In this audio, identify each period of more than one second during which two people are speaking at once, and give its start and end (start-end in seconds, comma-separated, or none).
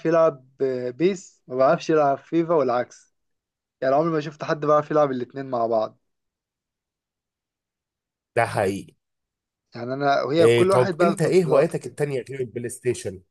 10.4-12.0